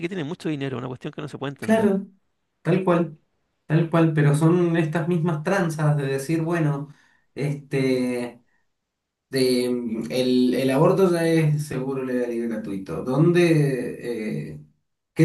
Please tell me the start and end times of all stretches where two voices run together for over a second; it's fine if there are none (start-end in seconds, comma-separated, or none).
none